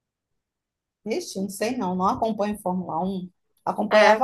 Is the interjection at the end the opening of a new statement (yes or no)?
no